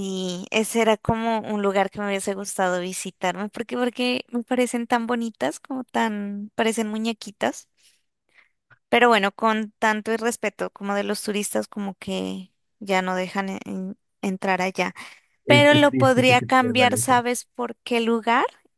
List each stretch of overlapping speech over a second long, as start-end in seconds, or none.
15.5-17.2